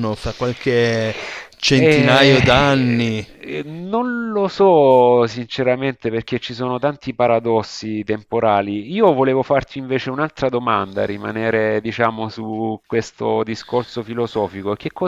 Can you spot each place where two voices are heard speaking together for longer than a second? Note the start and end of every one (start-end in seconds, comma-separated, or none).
1.7-3.2